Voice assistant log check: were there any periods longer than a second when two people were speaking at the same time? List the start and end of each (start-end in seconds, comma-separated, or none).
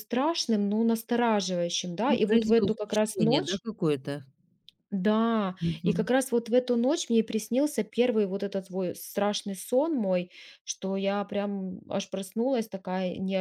2.0-3.6